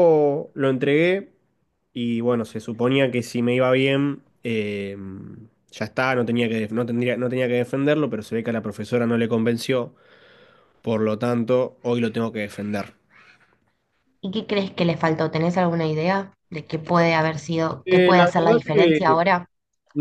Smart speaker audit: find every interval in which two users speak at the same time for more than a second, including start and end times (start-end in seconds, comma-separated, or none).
17.9-19.2